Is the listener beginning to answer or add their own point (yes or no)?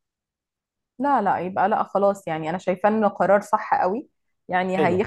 no